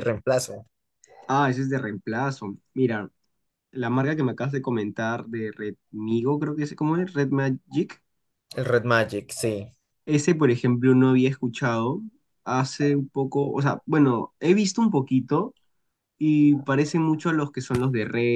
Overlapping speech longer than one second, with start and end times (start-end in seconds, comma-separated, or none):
none